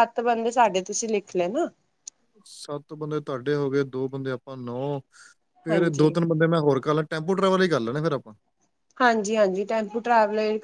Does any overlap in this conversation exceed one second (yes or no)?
no